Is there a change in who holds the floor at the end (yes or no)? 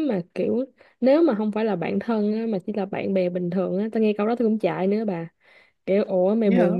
no